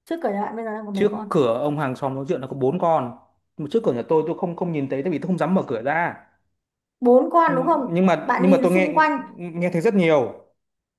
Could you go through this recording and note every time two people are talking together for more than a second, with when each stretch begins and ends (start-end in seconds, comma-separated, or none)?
7.5-8.9